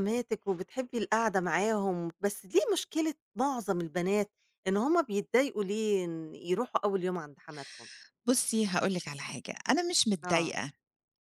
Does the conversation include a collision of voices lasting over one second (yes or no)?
no